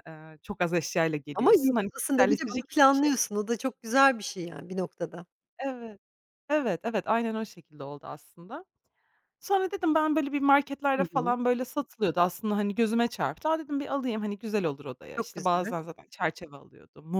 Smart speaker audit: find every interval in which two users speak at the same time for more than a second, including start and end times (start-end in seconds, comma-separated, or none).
1.4-3.1